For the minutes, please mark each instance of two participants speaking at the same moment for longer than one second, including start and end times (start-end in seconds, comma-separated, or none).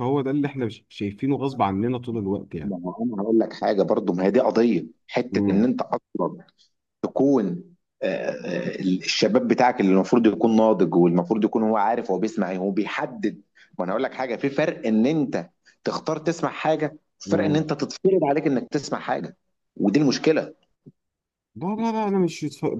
none